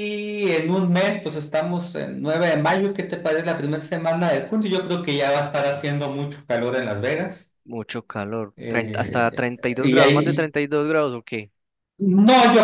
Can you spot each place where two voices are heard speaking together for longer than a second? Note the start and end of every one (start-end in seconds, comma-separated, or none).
8.6-10.5